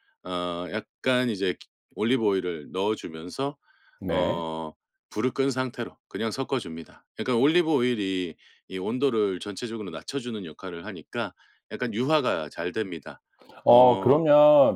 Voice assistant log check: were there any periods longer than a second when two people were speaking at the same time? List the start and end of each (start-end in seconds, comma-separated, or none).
none